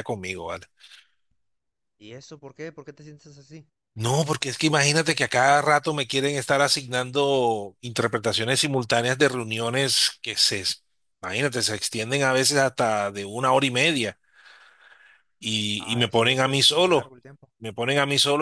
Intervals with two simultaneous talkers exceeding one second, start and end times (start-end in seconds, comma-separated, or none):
15.8-17.1